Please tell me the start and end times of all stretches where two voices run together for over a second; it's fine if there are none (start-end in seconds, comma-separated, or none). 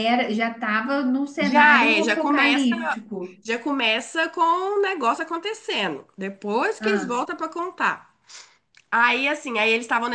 1.4-2.7